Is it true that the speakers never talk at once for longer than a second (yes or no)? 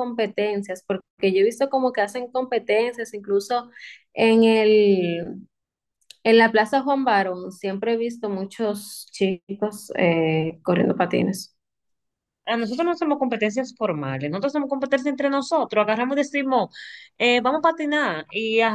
yes